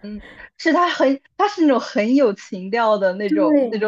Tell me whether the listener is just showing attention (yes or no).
no